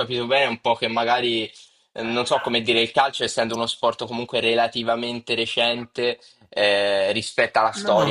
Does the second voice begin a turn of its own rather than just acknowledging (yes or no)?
no